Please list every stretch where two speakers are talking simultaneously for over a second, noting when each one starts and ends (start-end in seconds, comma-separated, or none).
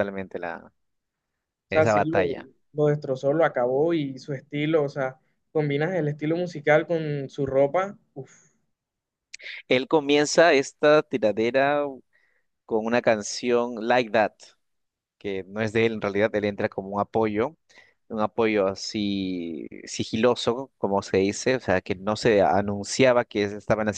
none